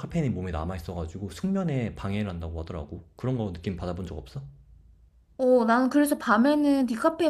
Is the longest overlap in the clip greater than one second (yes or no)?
no